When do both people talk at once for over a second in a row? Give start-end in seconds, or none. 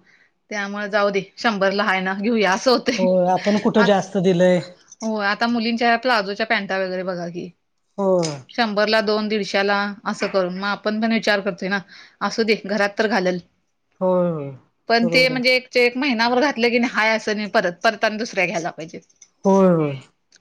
none